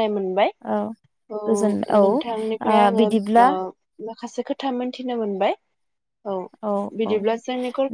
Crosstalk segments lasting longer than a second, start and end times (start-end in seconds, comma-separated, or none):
1.5-3.5